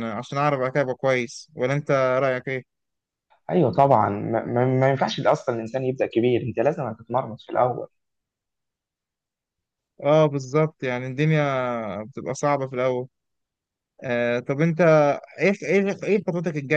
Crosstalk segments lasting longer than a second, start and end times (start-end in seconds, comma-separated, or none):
none